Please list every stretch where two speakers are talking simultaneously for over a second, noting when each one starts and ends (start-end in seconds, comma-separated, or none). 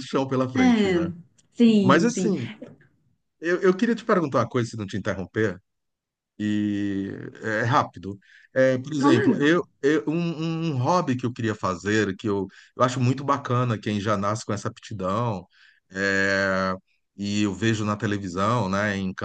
none